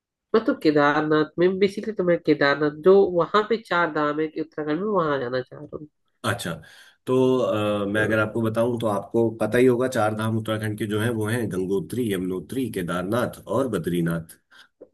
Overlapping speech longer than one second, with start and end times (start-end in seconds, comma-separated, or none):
none